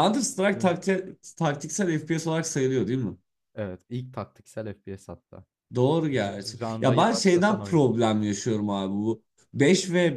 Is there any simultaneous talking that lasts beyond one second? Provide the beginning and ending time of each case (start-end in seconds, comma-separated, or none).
6.2-7.8